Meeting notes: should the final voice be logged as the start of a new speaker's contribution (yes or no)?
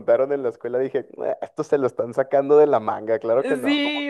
yes